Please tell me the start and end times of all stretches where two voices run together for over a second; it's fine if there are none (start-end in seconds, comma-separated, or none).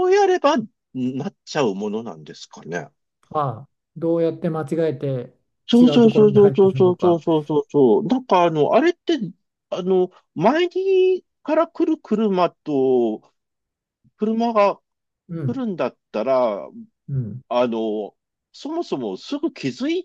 5.8-7.2